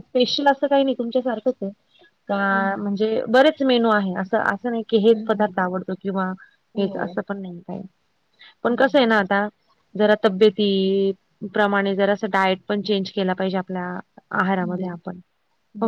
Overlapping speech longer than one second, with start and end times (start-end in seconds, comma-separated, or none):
none